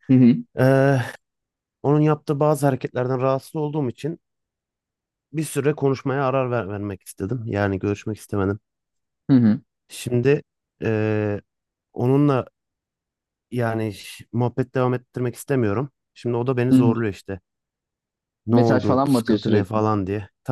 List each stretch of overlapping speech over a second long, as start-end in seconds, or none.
18.5-19.8